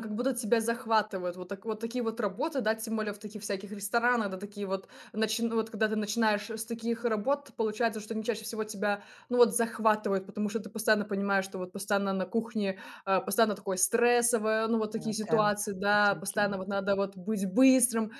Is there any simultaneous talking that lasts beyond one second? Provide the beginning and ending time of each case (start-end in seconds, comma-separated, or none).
14.9-16.5